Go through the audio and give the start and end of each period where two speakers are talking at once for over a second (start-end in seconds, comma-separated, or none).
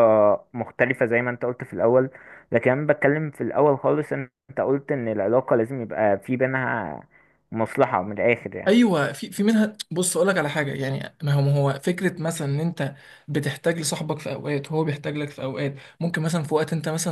none